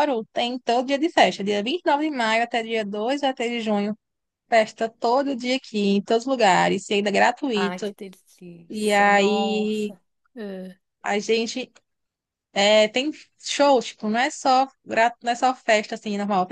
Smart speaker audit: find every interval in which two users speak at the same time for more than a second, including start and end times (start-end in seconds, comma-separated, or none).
8.7-9.9